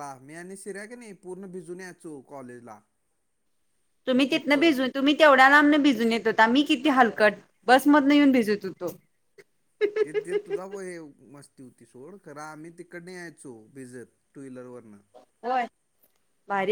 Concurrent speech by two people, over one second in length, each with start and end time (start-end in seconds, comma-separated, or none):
none